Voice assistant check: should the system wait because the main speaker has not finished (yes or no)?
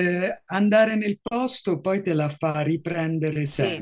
no